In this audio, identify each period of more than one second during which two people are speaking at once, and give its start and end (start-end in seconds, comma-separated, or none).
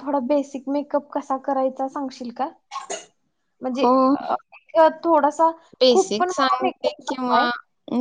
5.9-7.4